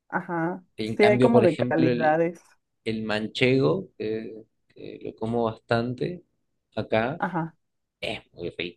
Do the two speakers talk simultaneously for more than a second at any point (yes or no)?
yes